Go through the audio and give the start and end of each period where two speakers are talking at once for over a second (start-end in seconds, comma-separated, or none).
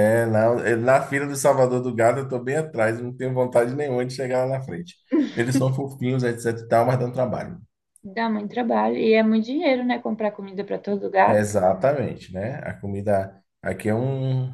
none